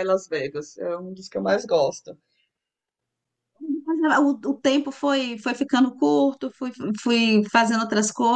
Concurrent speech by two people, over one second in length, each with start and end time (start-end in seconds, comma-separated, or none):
none